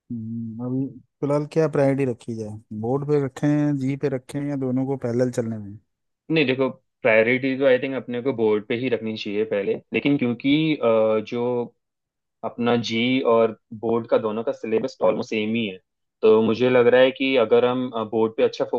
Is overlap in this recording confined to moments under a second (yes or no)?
yes